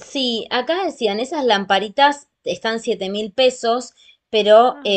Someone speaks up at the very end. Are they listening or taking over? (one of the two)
listening